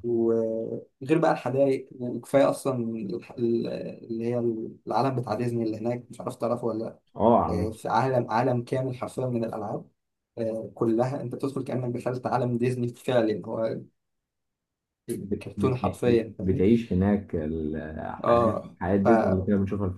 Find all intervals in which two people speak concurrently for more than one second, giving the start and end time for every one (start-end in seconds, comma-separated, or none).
15.2-16.6